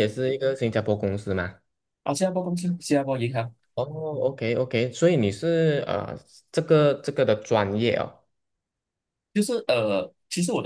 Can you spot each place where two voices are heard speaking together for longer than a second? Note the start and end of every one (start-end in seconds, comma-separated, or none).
none